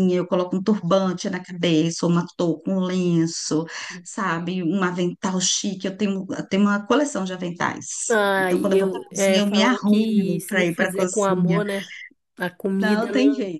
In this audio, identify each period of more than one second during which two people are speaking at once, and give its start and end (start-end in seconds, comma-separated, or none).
8.4-11.6